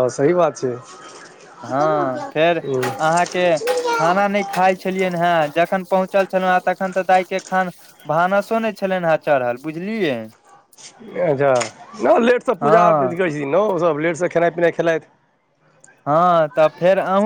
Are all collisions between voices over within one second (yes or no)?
yes